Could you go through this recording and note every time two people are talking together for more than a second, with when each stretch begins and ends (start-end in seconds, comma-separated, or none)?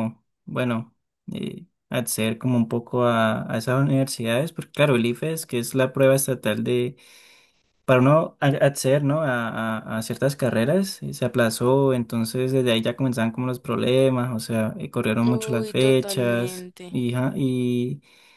15.2-17.0